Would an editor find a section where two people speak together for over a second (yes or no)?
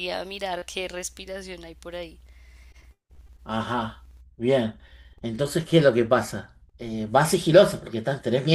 no